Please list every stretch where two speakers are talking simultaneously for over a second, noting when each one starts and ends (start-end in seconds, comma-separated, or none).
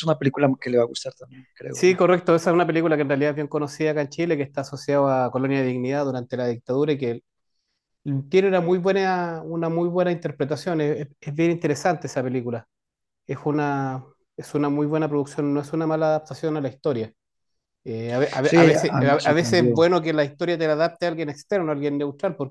18.4-19.9